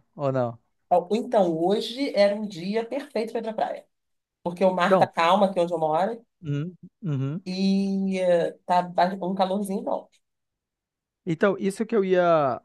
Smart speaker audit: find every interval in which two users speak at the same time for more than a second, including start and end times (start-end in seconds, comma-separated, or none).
none